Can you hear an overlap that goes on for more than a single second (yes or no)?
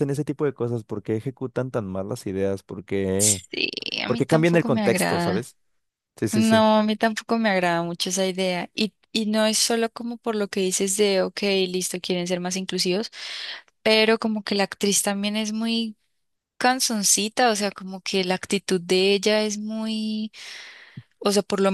yes